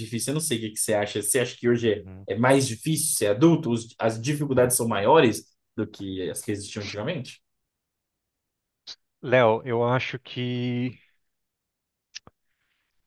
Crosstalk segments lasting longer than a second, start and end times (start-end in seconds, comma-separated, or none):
none